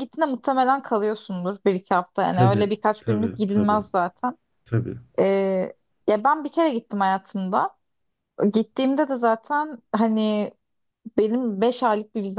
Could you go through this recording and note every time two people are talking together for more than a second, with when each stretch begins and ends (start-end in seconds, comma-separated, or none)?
2.3-3.8